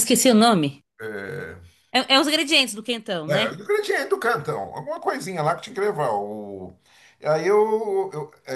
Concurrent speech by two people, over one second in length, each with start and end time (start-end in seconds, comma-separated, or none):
none